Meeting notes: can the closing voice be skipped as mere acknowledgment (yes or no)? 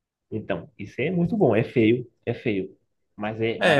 no